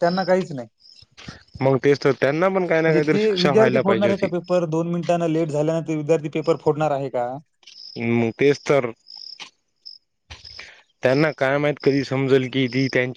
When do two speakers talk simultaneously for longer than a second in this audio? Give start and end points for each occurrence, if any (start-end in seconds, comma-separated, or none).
2.9-4.3